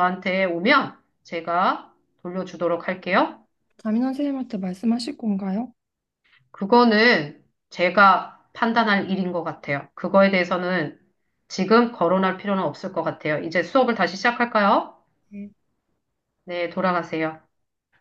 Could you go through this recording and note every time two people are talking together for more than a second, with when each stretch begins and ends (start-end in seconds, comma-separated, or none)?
none